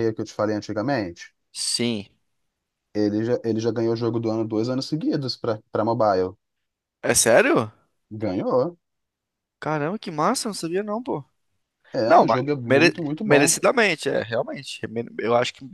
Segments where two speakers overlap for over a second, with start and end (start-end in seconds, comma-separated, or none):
12.1-13.6